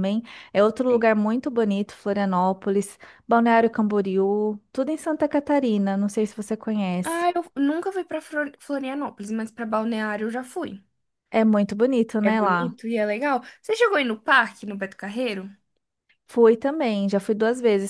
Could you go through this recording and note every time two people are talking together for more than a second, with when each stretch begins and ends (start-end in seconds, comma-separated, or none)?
none